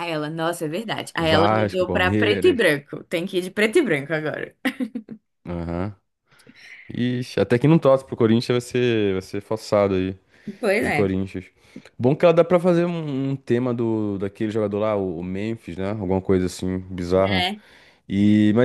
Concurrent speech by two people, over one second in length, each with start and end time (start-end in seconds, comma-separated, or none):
1.2-2.6